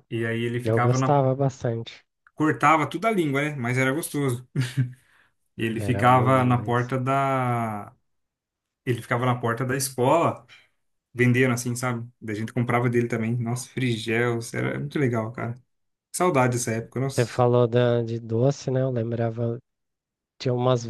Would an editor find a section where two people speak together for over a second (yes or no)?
yes